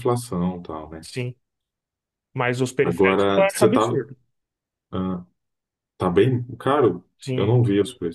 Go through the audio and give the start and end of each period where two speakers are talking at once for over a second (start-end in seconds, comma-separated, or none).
2.8-4.0